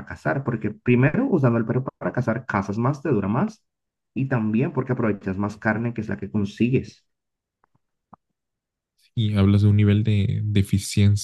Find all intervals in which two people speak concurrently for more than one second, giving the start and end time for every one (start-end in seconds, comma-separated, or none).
none